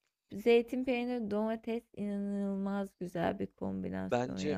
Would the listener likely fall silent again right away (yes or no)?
no